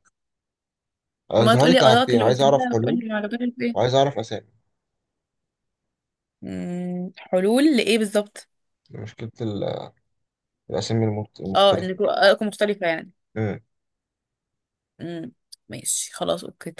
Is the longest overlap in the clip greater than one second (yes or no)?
yes